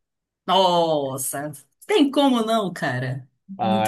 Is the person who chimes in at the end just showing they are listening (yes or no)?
no